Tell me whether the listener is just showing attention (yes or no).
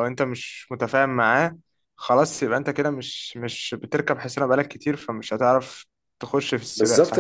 no